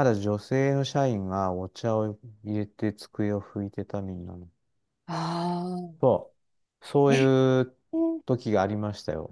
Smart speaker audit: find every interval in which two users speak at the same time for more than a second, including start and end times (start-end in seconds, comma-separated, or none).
none